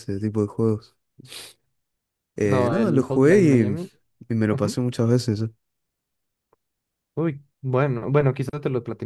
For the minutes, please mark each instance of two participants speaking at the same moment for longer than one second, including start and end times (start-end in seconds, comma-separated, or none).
2.5-3.8